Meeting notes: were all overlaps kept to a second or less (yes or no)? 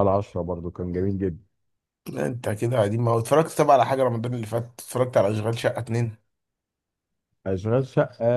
yes